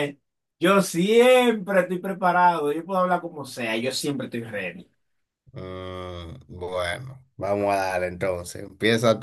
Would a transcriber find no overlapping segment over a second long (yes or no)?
yes